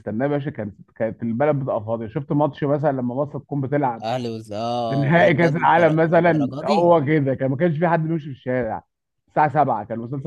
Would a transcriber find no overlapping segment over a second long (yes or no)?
no